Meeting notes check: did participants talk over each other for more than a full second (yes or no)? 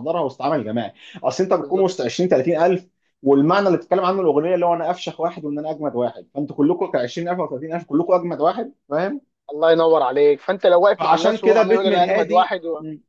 yes